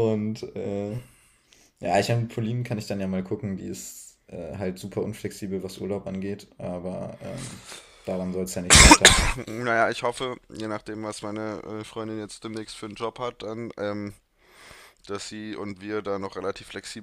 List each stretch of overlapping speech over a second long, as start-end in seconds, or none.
none